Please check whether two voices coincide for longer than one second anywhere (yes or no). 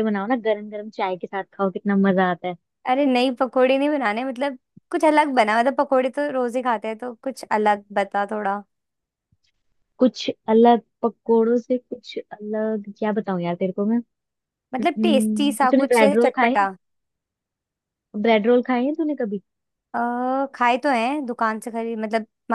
yes